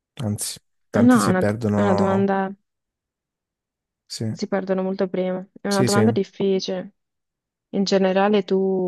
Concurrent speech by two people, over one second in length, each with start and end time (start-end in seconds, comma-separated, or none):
0.9-2.3